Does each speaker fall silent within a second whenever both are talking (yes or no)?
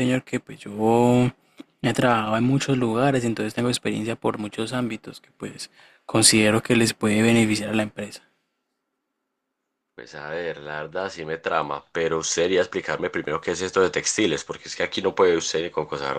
yes